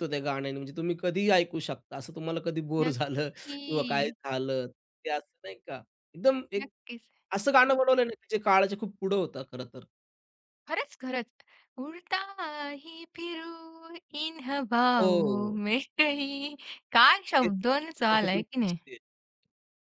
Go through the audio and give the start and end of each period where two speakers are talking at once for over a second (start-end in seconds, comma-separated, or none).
2.8-4.2, 17.4-18.8